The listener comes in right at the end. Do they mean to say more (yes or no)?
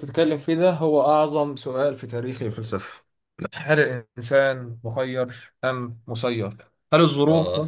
no